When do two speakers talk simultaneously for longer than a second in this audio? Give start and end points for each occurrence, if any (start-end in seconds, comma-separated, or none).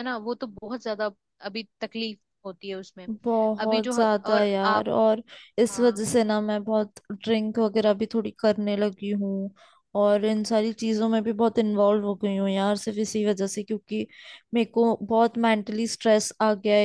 3.6-4.9